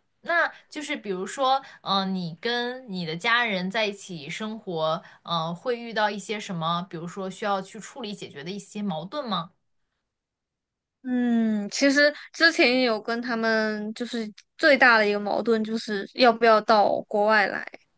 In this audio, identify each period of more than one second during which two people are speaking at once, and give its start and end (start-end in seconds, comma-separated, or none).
none